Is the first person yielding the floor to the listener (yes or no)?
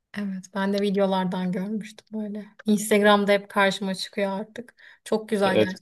yes